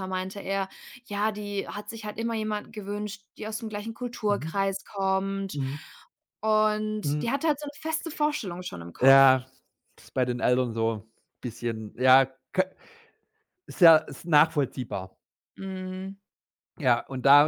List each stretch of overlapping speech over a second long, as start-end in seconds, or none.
none